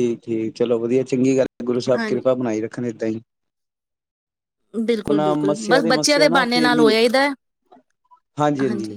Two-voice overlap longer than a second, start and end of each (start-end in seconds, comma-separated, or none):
4.9-6.9